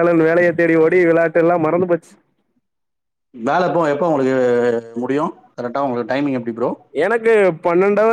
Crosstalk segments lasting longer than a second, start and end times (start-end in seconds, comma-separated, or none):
none